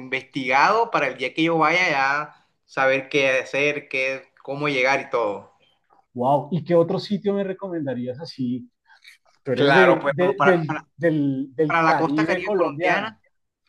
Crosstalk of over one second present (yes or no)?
yes